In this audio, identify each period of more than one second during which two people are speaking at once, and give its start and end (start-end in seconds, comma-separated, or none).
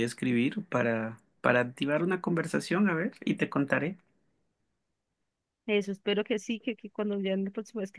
none